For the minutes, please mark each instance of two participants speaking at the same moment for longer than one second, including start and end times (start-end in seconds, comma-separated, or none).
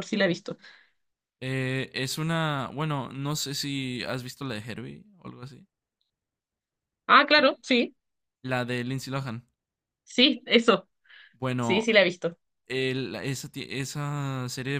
none